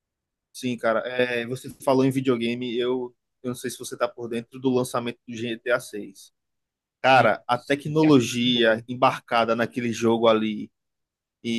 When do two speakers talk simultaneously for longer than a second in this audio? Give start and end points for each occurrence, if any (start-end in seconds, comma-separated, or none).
7.1-8.8